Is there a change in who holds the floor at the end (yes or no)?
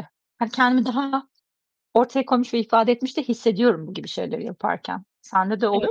yes